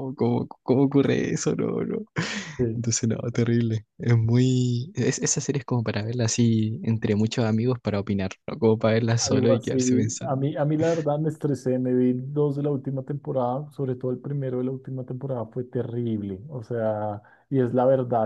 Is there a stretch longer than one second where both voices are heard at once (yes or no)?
yes